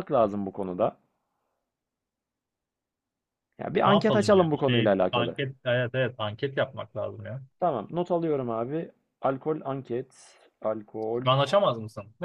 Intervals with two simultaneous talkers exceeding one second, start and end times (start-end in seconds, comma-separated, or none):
3.8-5.4